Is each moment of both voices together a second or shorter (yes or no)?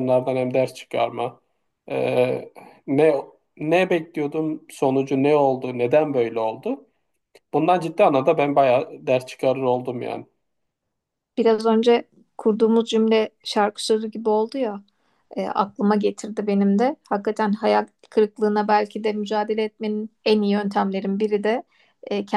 yes